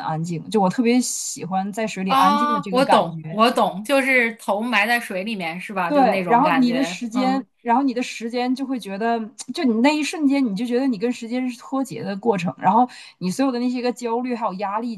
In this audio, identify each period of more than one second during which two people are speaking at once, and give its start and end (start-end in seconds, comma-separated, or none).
2.1-3.5, 5.9-7.5